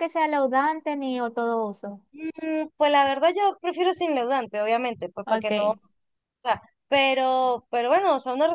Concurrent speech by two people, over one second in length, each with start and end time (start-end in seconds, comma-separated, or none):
none